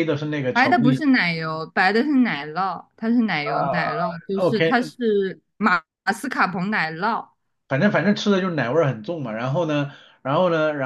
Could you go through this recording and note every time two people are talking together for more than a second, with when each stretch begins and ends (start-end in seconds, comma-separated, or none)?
3.4-4.9